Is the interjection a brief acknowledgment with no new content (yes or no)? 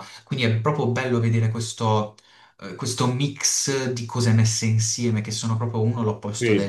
yes